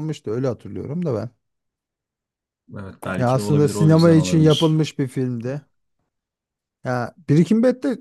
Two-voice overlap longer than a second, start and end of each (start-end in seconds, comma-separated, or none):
3.2-4.8